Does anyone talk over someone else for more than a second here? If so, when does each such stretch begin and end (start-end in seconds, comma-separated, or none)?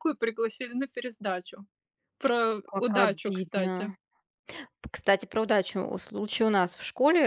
2.6-3.9